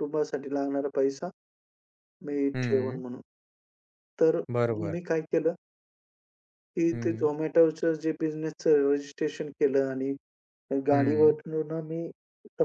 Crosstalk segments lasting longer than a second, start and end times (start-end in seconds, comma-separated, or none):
none